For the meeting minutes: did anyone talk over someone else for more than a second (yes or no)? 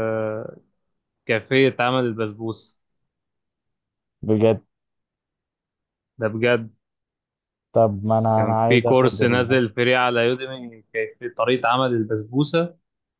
yes